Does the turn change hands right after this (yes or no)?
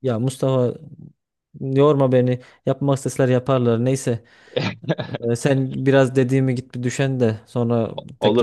yes